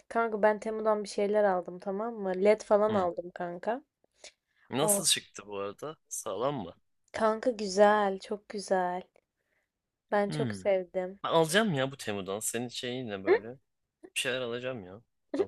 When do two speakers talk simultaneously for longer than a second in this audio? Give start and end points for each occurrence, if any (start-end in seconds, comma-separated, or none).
none